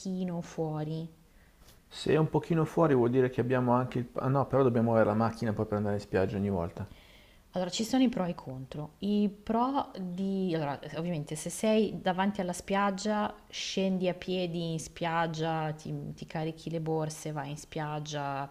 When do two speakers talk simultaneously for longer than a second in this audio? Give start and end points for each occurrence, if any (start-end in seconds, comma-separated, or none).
none